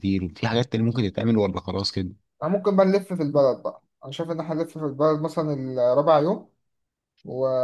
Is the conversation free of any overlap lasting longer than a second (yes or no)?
yes